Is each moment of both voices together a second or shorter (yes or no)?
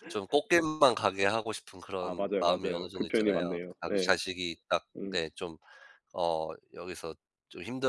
no